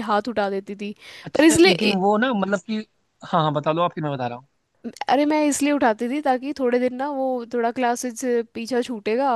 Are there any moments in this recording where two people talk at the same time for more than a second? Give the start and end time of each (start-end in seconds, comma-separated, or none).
none